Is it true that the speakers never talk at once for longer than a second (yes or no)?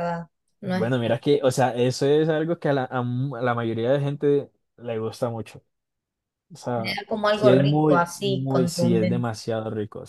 no